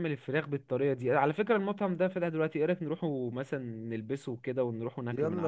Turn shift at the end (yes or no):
yes